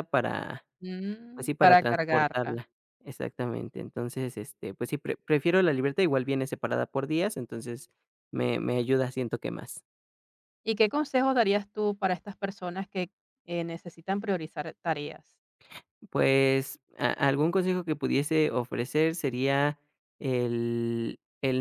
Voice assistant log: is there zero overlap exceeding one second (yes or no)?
no